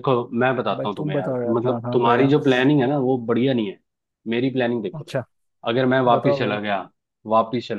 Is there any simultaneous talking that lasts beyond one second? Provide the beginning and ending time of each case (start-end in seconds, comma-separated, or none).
0.8-2.3